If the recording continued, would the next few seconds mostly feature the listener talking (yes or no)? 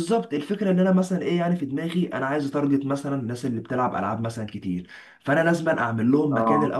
no